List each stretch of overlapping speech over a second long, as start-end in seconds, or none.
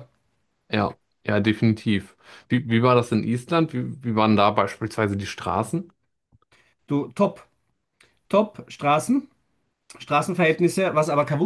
none